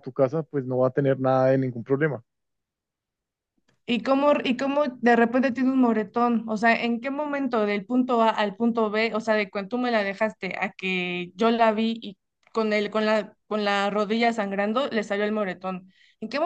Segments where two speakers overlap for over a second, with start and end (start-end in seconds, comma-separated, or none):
none